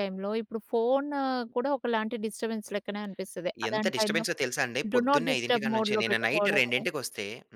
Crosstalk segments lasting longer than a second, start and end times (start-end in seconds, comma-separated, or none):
4.9-6.8